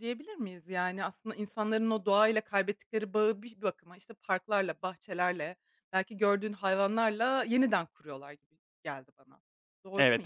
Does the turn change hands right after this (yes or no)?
yes